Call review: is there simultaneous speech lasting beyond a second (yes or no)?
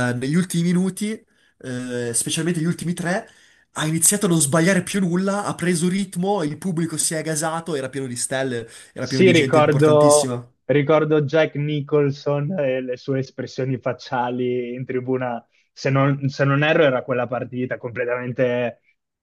yes